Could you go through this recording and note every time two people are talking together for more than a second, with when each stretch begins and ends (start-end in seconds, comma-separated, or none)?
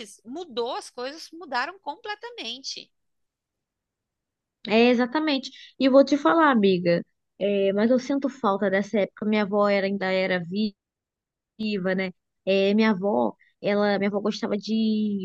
none